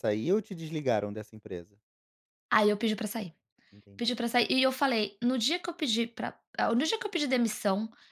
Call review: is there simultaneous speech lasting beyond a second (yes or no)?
no